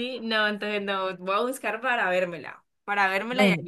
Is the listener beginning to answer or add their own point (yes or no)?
no